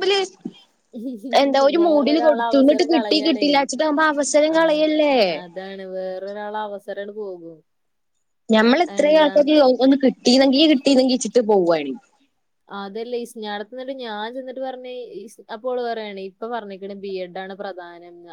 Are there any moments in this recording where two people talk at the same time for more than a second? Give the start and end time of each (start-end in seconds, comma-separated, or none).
1.8-3.5